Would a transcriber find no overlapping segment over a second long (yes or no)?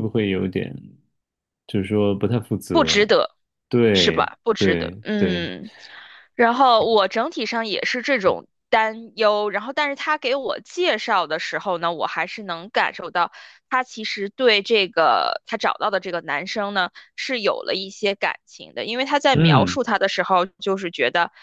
no